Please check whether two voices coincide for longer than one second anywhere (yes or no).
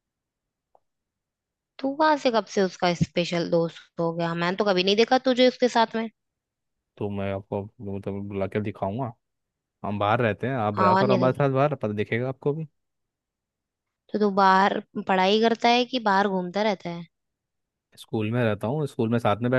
no